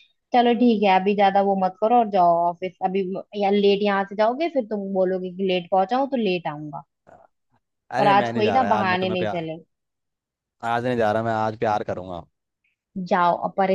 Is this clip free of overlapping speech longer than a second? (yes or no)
no